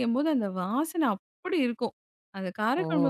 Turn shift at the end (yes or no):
no